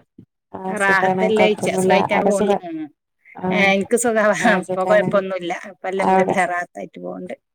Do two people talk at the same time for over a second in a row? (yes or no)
yes